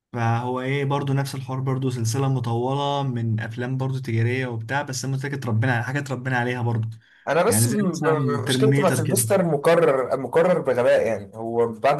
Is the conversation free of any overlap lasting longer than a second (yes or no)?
no